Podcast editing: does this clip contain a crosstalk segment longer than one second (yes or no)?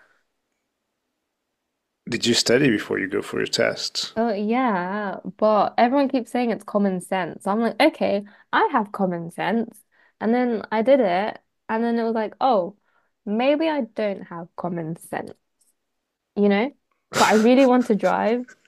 no